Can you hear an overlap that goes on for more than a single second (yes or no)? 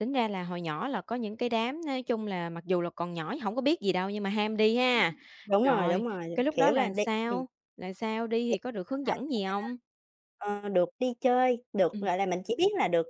yes